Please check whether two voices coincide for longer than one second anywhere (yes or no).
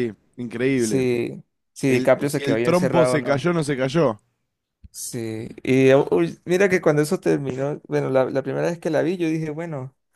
yes